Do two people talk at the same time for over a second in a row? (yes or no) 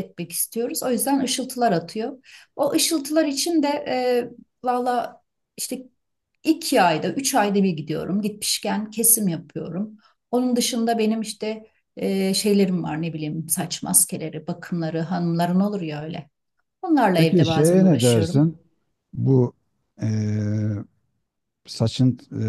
yes